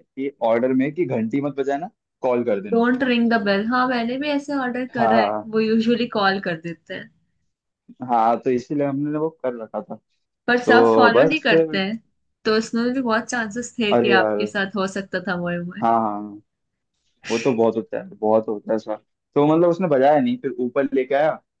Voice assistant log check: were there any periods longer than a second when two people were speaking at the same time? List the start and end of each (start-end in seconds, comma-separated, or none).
10.5-11.8